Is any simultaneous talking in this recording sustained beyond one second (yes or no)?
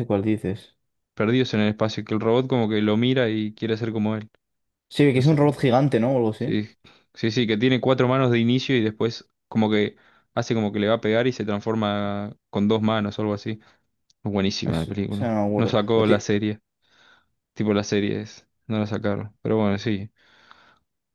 yes